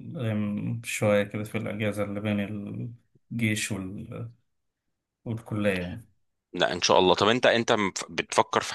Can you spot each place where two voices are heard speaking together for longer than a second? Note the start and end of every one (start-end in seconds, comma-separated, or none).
none